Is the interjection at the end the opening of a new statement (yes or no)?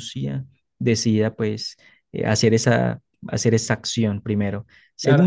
yes